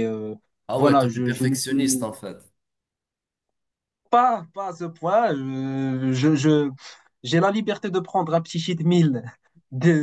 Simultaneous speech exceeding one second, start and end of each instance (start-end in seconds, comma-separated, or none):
0.8-2.1